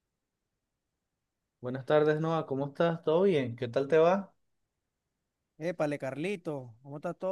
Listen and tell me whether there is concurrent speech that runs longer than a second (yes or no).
no